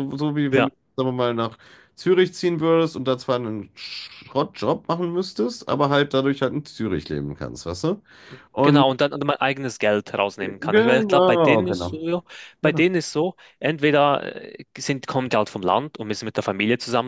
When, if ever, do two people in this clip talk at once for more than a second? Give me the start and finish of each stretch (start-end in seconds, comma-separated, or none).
10.6-12.0